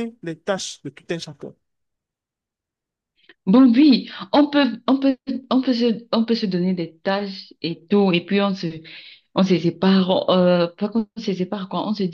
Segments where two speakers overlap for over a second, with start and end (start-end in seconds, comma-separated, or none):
none